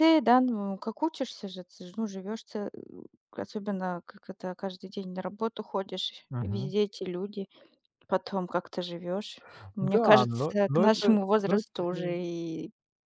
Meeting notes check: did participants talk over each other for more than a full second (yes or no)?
yes